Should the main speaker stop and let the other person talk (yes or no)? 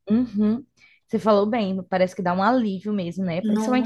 no